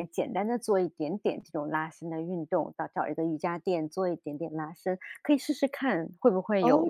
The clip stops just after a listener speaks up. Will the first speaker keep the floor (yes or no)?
no